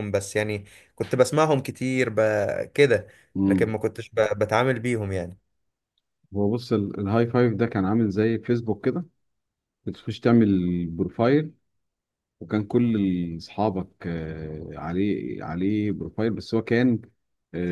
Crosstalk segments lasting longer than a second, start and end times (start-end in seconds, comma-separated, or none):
none